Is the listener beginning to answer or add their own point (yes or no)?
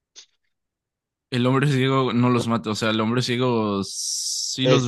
yes